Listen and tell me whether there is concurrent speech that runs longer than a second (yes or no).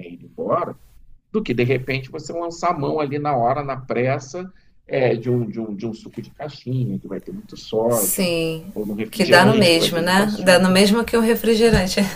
yes